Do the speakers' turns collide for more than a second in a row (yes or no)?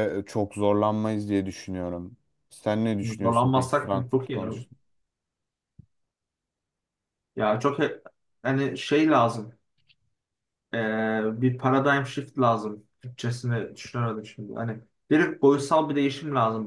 yes